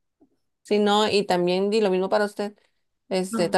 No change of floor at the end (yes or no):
yes